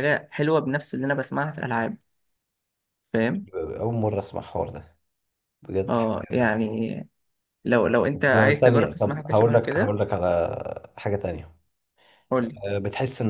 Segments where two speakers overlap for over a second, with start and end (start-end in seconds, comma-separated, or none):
8.1-9.9